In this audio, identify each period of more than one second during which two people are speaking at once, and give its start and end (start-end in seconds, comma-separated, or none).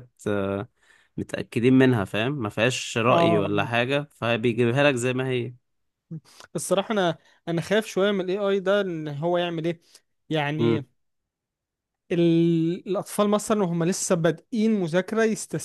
none